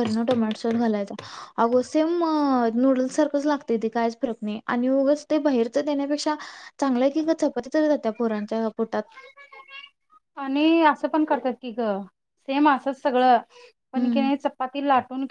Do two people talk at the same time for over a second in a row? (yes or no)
no